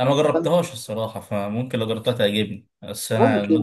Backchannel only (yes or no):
yes